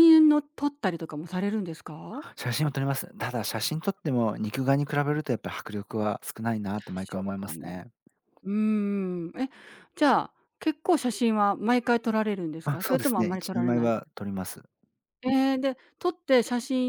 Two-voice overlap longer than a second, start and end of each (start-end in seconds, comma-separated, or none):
12.6-13.9